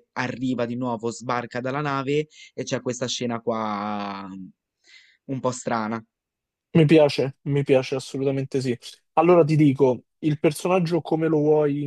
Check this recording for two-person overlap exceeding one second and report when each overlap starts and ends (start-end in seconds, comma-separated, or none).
none